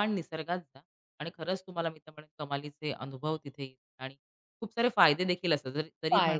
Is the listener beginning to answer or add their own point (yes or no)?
no